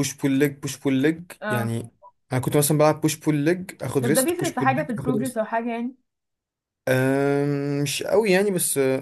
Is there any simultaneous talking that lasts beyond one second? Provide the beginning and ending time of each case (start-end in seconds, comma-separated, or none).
4.0-5.4